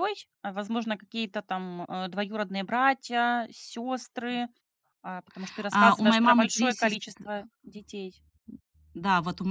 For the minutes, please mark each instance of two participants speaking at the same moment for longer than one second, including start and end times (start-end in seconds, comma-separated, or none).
5.7-7.0